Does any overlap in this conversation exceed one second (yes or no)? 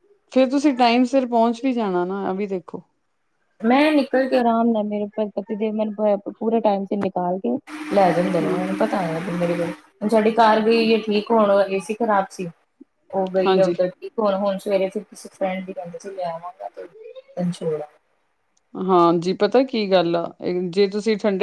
no